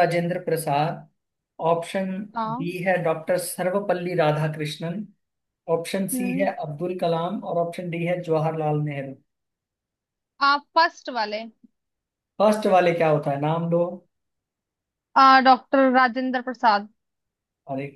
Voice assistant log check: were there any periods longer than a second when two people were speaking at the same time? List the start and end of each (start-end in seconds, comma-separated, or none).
none